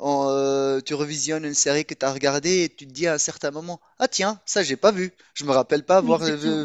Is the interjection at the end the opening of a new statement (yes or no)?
no